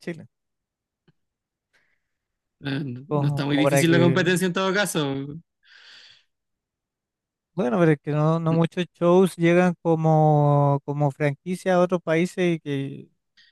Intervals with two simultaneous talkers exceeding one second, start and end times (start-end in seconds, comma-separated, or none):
3.1-4.3